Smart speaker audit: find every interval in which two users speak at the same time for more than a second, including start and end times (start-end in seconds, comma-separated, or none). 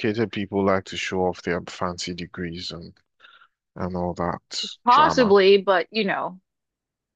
none